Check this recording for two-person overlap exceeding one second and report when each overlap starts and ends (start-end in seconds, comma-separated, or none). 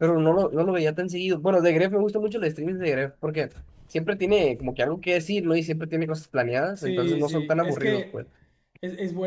6.7-8.2